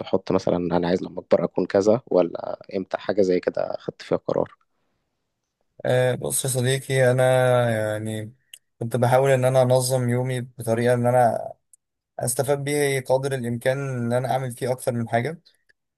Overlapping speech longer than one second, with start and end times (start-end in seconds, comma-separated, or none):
none